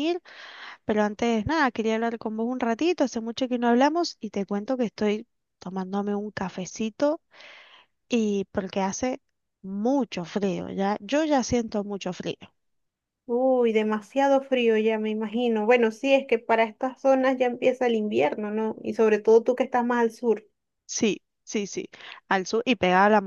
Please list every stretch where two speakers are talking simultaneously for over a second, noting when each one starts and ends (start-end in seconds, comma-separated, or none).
none